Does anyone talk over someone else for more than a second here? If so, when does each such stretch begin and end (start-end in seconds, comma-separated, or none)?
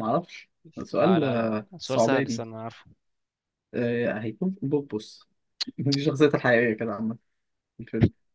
0.9-2.4